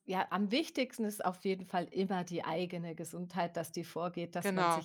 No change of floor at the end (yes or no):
yes